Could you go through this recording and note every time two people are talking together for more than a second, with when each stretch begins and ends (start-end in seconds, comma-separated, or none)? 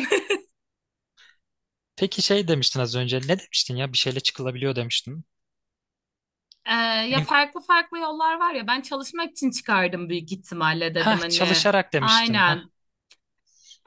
10.9-12.6